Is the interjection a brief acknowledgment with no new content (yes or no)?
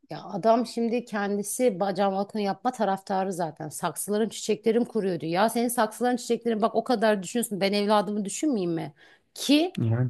yes